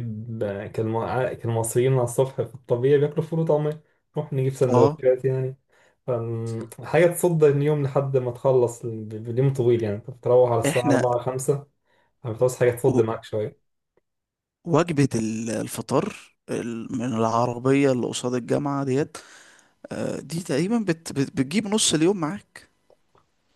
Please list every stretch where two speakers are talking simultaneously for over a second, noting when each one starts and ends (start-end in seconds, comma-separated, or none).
none